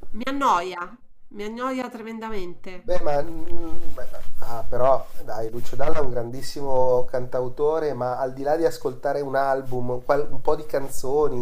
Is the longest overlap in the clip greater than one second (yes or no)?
no